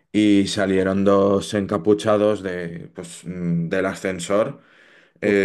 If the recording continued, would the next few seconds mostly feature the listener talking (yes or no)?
yes